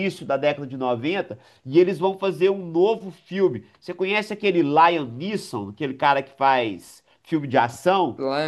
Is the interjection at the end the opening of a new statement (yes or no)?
yes